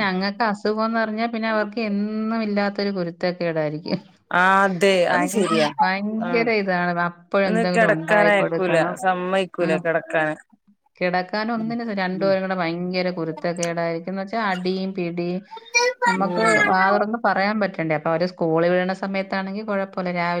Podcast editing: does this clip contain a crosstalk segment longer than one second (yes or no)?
yes